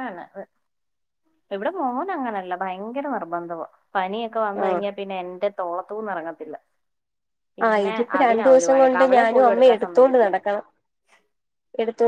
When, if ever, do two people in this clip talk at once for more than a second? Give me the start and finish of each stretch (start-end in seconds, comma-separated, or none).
7.7-10.3